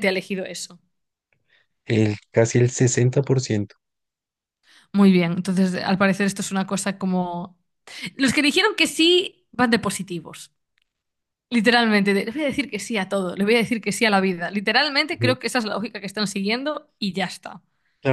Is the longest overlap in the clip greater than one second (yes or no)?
no